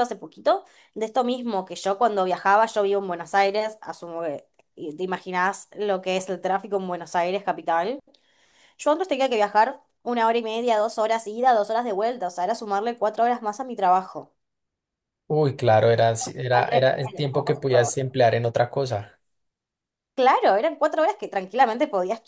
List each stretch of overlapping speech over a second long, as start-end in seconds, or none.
16.3-18.0